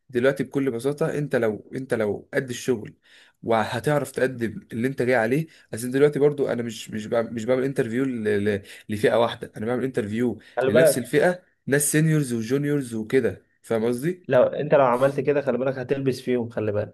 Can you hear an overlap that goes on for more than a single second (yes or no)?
no